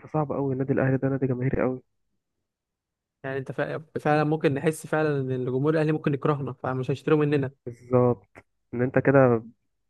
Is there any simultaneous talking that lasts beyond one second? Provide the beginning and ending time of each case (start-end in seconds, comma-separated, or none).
none